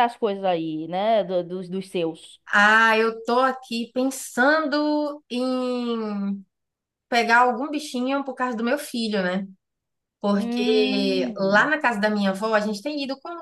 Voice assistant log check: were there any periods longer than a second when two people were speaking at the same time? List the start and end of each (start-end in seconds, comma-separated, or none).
10.3-11.7